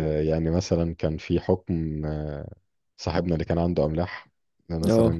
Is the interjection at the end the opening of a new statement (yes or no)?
no